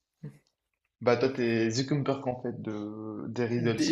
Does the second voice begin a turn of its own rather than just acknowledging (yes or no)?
yes